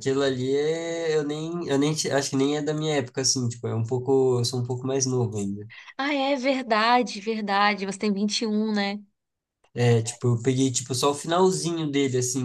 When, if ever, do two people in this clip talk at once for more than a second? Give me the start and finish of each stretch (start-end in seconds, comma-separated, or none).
none